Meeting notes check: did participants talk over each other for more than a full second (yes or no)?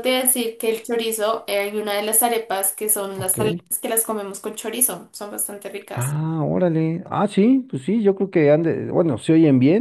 no